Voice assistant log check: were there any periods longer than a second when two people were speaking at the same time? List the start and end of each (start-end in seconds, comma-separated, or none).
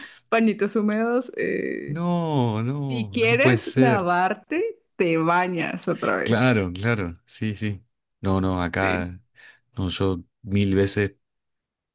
2.7-4.1